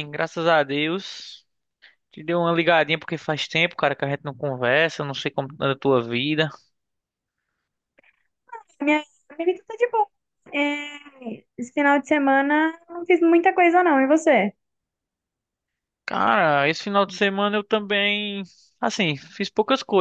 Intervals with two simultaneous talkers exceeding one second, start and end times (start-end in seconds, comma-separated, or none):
none